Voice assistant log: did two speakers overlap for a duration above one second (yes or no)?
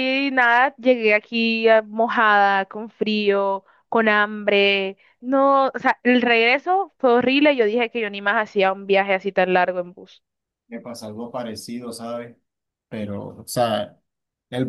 no